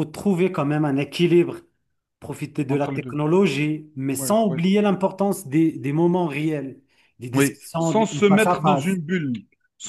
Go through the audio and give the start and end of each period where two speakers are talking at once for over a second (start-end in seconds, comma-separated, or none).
7.3-9.0